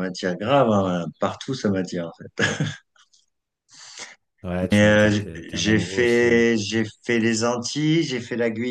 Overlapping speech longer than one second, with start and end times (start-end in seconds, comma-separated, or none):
4.7-6.4